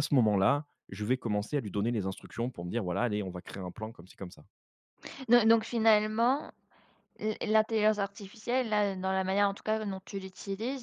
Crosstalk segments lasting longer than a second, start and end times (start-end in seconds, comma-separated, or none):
none